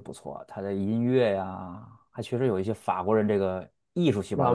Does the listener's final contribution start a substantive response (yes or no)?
no